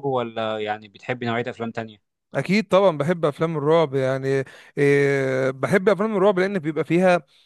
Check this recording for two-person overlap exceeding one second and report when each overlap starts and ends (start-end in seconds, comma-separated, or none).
none